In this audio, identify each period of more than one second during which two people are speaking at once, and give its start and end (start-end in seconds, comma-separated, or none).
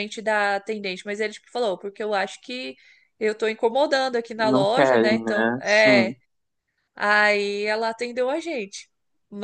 4.4-6.1